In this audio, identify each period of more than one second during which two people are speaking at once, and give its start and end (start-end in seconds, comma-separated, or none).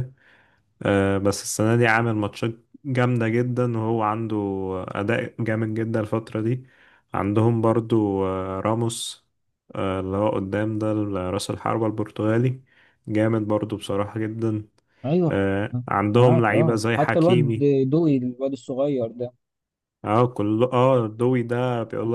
16.1-17.7